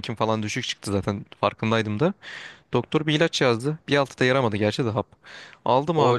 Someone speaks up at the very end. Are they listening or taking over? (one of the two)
taking over